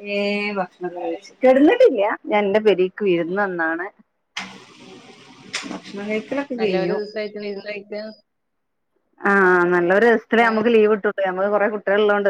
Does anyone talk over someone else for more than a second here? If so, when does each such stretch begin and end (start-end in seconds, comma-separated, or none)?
none